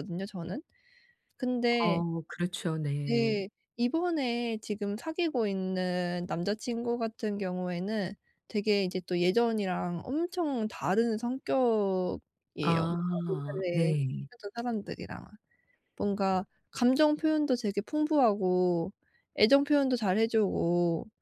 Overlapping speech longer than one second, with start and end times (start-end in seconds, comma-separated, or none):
12.6-13.9